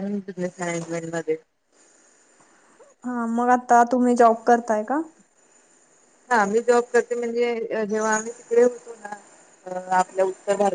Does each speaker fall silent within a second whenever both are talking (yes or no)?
yes